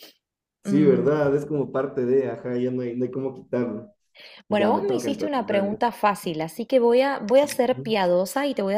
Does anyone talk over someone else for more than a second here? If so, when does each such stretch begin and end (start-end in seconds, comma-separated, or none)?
4.5-5.8